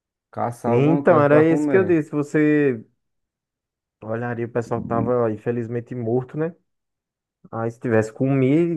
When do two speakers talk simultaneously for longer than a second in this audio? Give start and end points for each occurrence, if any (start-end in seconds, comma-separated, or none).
0.7-2.0